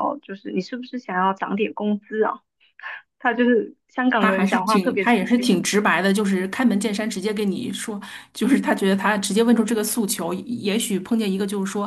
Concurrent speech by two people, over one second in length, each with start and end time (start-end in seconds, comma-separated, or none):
4.2-5.6